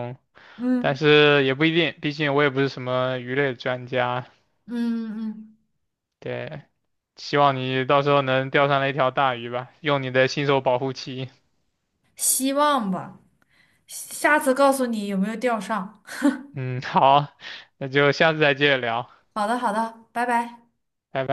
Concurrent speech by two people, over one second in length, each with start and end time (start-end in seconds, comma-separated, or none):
none